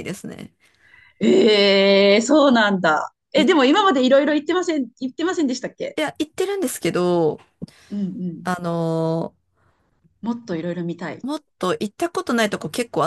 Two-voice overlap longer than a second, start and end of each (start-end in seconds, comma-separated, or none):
none